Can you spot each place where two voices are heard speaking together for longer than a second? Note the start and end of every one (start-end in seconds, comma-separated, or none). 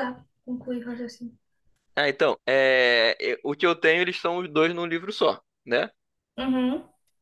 none